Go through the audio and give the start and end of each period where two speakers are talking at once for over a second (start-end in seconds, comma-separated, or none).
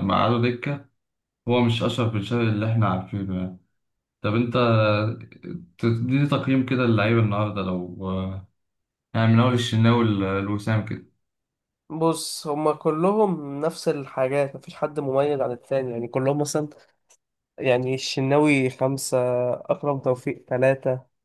none